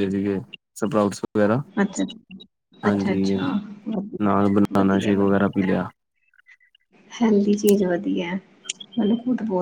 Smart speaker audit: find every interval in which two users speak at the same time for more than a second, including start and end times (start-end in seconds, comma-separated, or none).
4.2-5.4